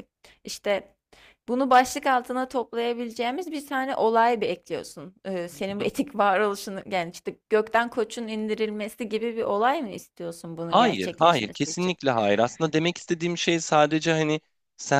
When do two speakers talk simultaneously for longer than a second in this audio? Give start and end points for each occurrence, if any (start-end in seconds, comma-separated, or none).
10.7-11.9